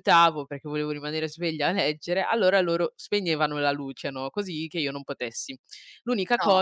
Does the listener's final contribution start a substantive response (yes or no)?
no